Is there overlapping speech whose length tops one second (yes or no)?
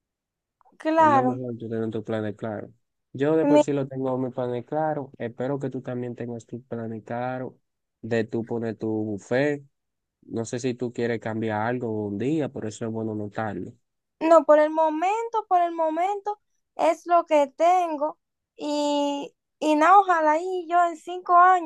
no